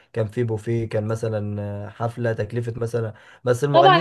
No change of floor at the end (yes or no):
no